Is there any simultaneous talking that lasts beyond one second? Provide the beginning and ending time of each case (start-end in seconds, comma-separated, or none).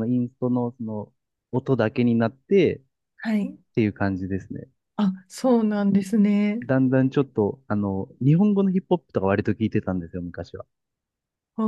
none